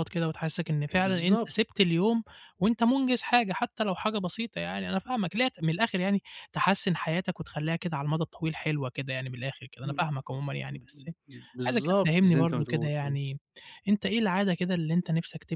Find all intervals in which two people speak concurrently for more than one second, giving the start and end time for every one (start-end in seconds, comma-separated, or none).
11.7-13.2